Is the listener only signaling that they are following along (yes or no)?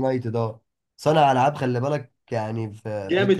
no